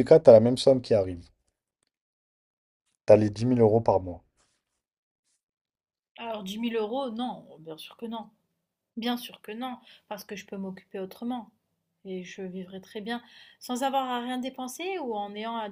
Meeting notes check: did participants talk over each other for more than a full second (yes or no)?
no